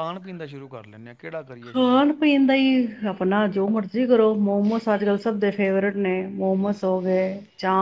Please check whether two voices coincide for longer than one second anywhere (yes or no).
no